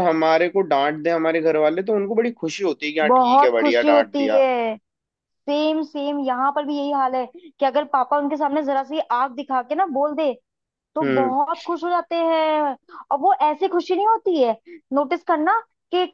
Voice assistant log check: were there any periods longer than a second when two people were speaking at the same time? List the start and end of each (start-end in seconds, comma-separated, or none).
3.0-4.4